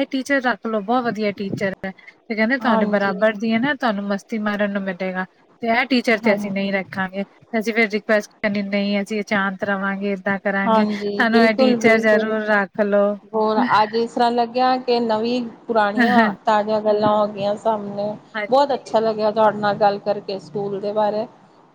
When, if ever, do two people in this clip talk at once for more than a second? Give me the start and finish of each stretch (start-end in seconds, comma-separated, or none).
10.7-12.4